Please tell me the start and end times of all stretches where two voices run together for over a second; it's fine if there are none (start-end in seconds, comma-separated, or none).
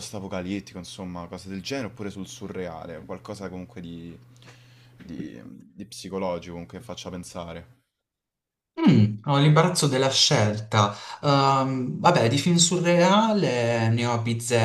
none